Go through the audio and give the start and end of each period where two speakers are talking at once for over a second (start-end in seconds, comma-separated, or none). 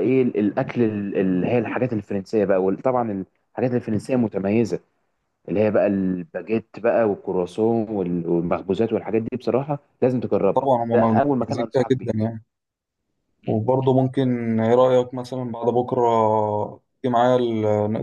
10.6-12.1